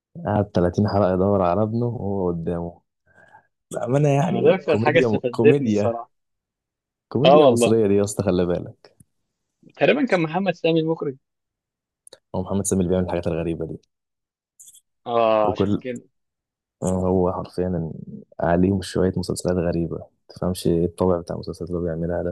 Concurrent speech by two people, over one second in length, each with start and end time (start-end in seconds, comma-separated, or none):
4.3-6.0